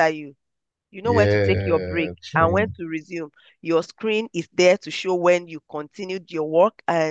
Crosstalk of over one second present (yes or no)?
yes